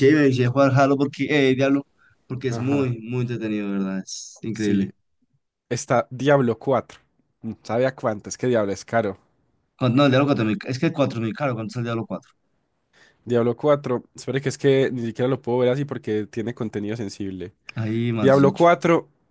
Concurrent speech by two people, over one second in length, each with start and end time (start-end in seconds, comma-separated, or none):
none